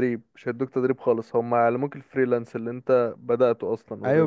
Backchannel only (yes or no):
no